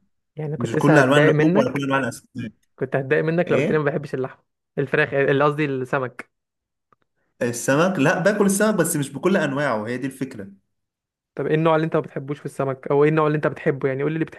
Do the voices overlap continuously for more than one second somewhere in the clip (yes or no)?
yes